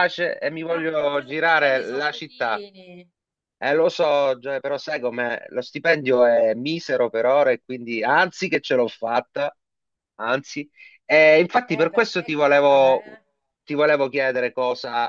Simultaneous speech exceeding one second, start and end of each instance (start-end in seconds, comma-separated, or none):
0.7-2.6, 11.7-13.0